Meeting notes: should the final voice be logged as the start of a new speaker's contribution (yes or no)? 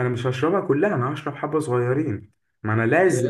no